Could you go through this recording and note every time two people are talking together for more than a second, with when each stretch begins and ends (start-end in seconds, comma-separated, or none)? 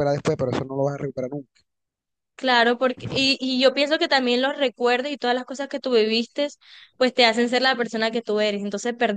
none